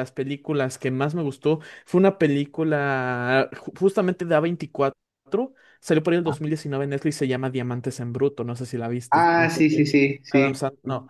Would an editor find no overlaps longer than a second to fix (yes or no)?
no